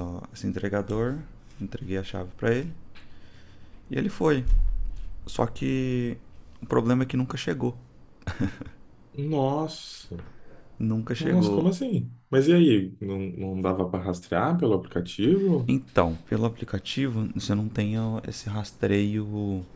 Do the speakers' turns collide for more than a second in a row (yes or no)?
no